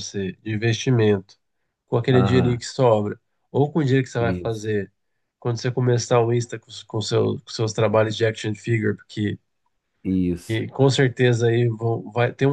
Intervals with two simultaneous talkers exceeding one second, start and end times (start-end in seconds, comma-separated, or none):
none